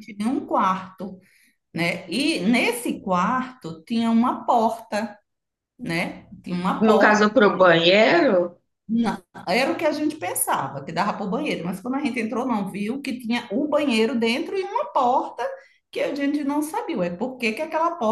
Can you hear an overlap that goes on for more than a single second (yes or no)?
no